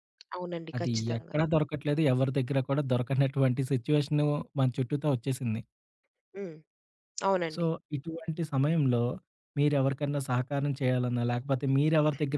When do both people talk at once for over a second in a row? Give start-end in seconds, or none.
none